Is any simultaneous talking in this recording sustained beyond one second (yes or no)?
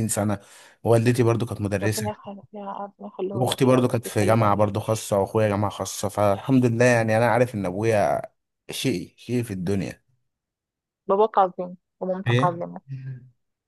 yes